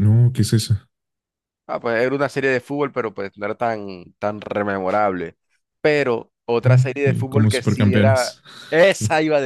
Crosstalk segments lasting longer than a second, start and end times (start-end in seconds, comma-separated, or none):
6.6-8.4